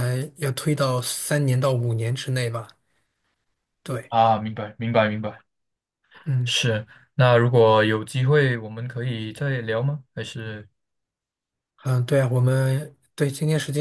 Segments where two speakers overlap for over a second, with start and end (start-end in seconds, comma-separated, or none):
none